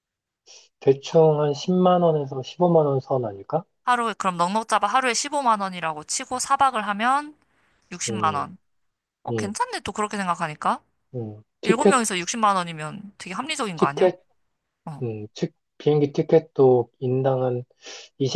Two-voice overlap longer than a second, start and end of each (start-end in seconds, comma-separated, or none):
none